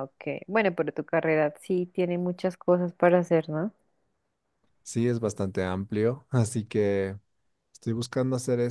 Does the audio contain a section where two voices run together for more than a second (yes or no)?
no